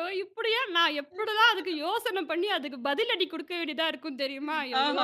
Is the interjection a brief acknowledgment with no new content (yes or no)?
no